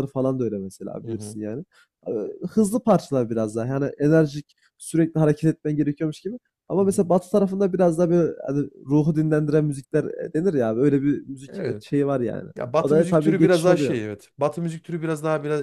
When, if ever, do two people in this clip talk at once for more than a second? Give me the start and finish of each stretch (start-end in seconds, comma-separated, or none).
12.6-14.0